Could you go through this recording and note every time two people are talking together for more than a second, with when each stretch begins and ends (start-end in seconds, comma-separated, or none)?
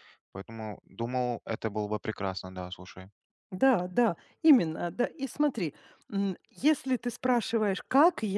none